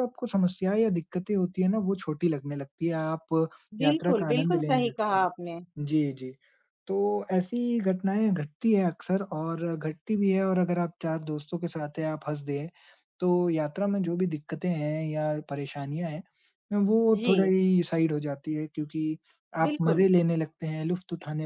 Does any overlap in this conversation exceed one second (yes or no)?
yes